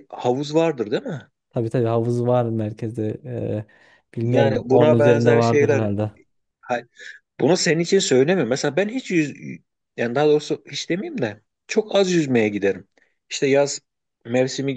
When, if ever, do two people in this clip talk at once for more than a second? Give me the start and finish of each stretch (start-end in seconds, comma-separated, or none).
4.2-5.9